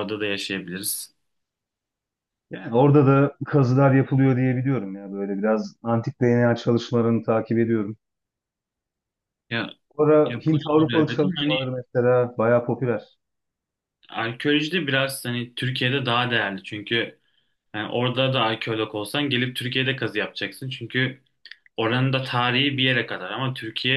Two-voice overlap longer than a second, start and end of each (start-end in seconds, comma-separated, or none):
10.2-11.6